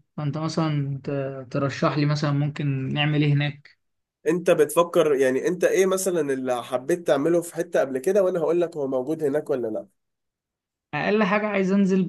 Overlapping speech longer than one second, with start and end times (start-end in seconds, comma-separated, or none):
none